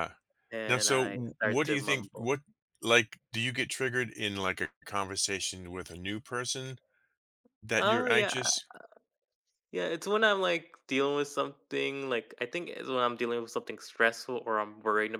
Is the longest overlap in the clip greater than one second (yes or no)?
yes